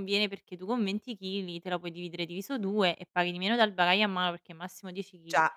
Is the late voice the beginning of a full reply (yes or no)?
no